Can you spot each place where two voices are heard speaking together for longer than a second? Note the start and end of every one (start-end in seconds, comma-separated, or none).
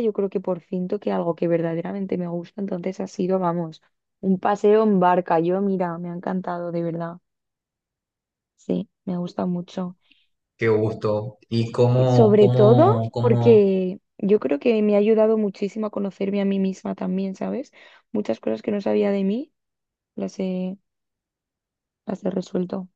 11.9-13.6